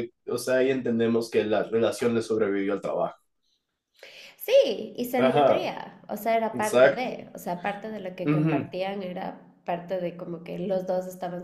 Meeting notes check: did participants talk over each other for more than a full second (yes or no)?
no